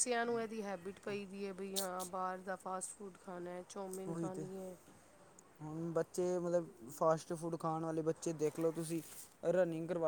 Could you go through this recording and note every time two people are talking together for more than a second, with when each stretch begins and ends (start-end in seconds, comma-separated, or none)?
none